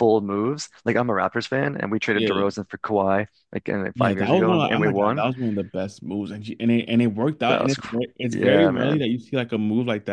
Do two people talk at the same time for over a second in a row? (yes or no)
yes